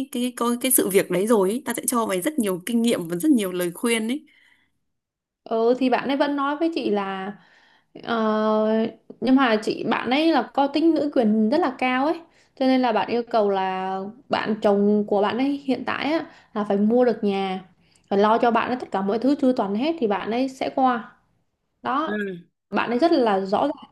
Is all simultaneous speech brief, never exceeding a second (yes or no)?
yes